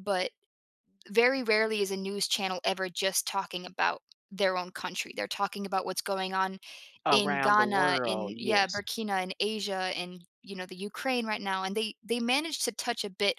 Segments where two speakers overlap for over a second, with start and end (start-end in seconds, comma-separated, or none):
7.1-8.8